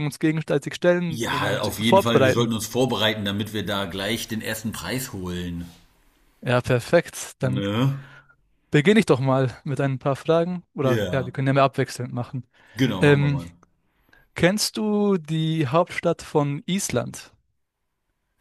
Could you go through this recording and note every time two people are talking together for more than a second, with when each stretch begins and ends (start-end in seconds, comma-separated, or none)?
1.1-2.6